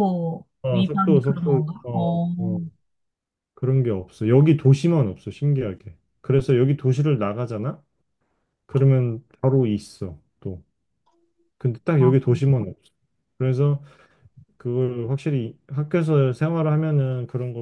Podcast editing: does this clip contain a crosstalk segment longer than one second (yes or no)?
yes